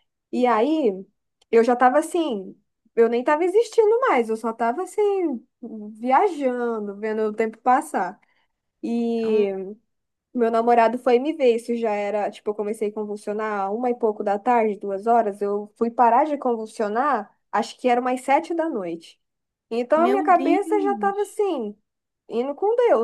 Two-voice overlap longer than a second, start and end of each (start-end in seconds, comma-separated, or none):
19.9-21.4